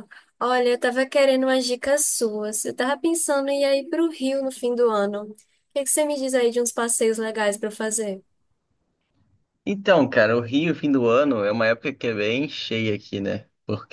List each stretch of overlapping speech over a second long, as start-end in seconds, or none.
none